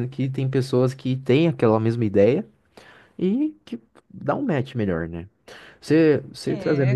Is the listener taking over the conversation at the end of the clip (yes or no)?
no